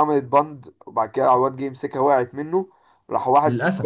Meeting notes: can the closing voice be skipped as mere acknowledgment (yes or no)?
yes